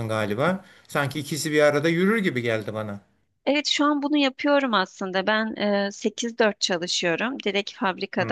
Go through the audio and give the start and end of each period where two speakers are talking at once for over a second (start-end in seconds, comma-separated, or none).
none